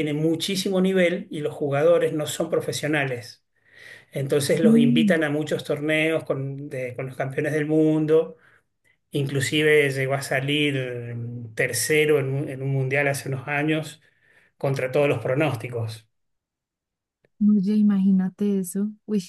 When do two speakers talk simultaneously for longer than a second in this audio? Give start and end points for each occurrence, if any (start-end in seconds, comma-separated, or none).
none